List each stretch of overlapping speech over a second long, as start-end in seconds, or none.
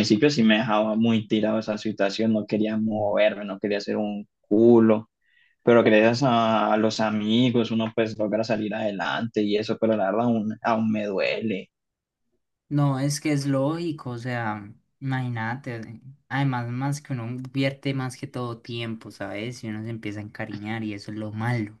none